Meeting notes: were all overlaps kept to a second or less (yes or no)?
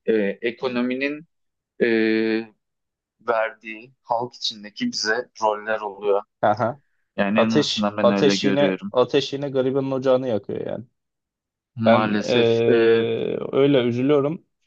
no